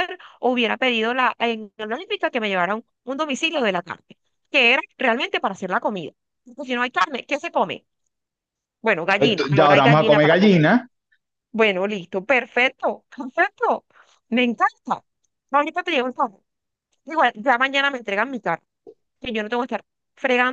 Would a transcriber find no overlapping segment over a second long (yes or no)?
no